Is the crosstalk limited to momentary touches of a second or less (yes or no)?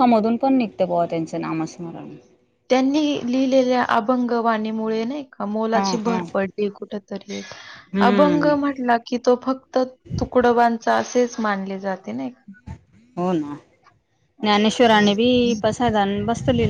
yes